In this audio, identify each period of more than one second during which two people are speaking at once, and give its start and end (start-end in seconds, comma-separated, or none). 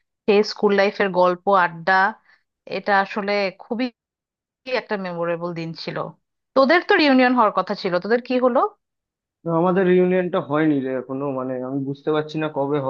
none